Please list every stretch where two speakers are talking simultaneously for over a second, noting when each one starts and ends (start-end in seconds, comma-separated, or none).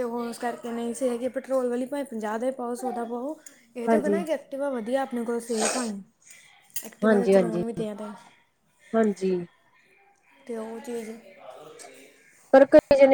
none